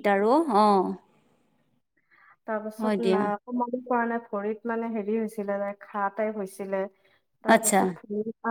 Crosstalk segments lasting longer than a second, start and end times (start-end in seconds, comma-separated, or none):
none